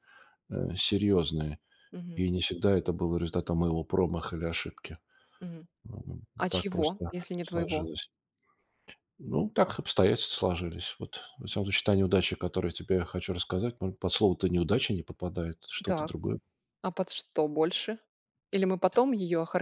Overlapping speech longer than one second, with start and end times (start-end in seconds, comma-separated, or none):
6.4-7.9